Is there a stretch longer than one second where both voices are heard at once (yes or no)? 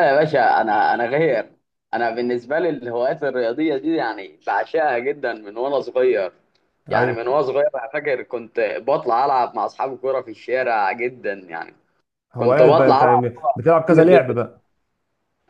yes